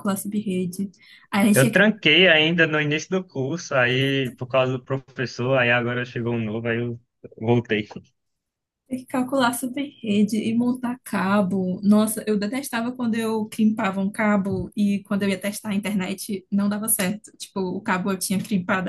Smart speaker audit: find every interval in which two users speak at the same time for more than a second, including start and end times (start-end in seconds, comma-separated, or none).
none